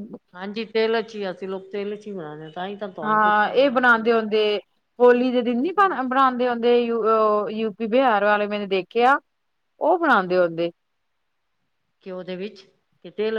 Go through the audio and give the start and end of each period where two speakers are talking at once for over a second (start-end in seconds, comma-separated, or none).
none